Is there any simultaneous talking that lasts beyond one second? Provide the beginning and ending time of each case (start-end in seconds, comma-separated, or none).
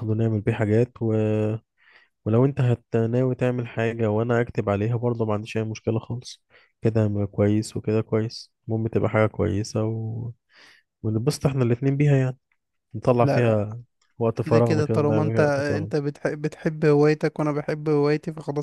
14.4-15.9